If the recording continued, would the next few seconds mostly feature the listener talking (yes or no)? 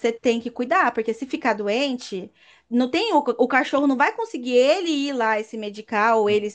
no